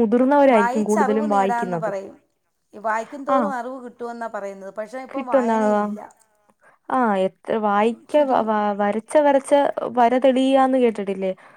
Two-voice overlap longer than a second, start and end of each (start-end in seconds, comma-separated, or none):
0.6-1.9